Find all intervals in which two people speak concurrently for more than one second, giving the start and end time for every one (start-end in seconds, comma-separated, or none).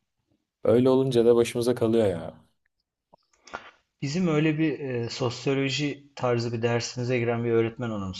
none